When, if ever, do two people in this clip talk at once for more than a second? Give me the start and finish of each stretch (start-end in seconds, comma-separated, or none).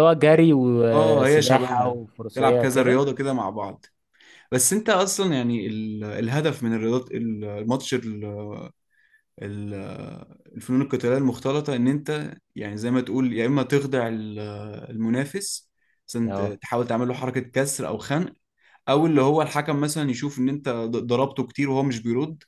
0.9-3.0